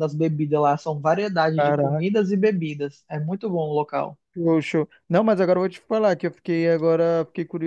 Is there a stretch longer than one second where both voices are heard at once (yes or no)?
no